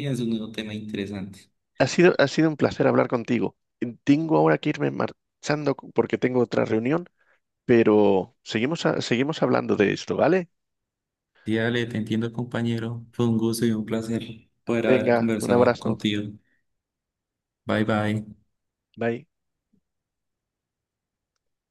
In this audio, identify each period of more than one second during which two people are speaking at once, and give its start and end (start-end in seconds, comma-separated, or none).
14.8-16.0